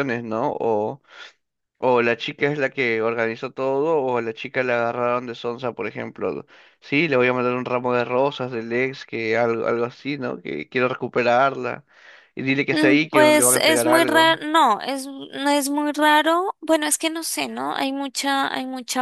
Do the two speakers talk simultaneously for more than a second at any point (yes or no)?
yes